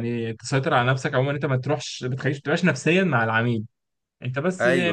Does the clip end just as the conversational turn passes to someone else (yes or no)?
no